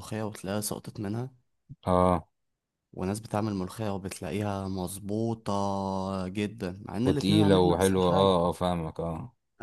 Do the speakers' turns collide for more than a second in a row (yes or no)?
yes